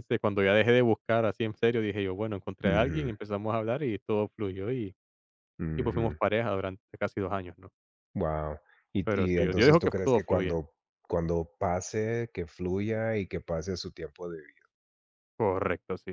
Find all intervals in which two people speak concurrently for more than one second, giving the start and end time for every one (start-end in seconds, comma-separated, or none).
9.1-10.6